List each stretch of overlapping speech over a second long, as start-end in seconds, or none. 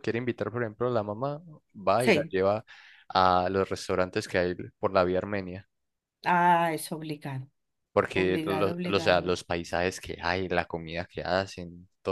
8.1-9.3